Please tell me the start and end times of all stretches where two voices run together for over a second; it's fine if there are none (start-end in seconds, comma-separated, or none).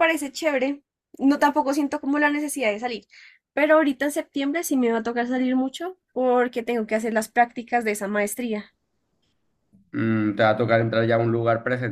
none